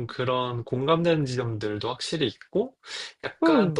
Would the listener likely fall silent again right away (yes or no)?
no